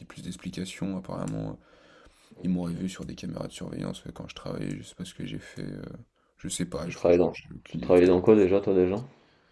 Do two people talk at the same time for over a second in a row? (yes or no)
yes